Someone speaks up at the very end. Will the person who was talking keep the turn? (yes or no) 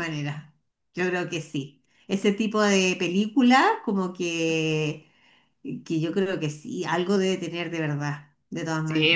no